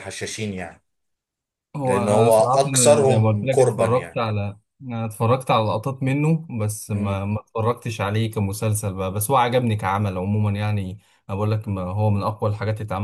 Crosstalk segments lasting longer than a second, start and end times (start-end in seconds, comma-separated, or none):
1.9-4.2